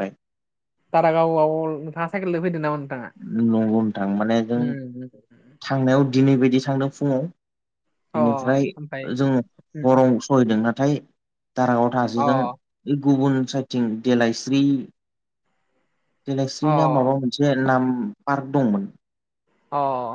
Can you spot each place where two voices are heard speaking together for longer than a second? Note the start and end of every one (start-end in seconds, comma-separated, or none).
none